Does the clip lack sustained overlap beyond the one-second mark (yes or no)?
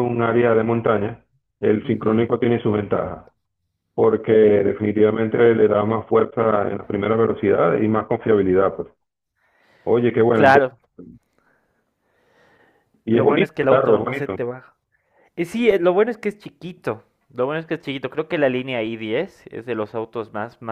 no